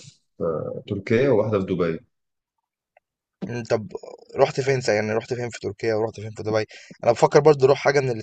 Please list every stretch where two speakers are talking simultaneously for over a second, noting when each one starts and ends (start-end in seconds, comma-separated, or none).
none